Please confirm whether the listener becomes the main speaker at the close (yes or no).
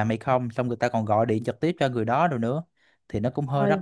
no